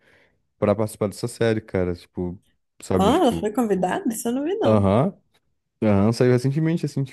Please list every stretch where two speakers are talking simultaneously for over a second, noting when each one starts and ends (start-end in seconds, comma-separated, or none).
none